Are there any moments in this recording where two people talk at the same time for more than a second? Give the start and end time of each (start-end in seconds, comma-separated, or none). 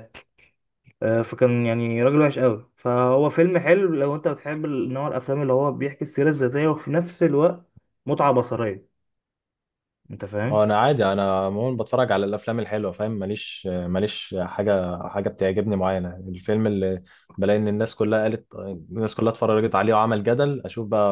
none